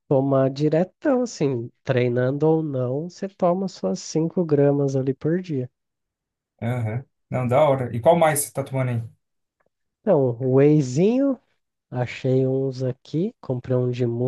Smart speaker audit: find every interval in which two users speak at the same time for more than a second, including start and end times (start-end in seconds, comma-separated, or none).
none